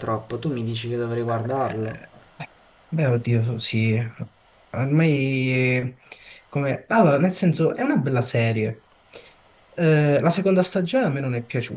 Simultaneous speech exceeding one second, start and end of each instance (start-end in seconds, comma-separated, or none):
none